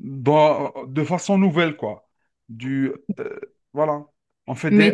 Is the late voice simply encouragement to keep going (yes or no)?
yes